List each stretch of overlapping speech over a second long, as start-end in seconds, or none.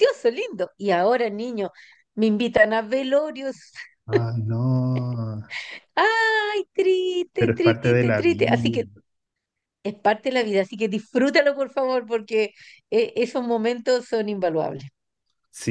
7.4-8.8